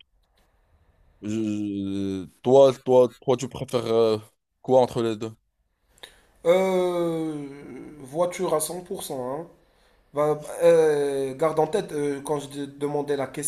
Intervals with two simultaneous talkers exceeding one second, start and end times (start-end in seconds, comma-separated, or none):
none